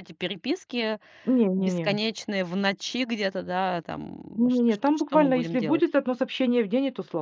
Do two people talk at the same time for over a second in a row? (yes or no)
yes